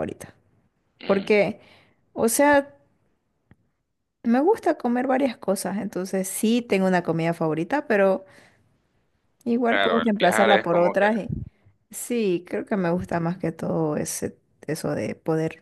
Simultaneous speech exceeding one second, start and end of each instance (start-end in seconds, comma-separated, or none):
9.7-11.1